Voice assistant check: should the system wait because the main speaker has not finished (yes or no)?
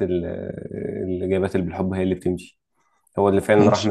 yes